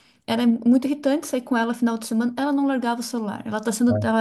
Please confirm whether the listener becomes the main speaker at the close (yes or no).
no